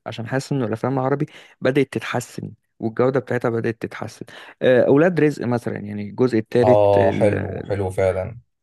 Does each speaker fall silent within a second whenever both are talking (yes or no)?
yes